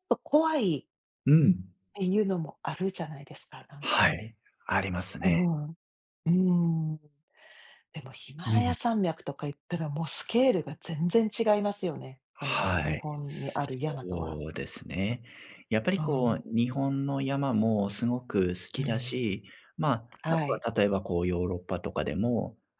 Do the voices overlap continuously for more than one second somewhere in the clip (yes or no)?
yes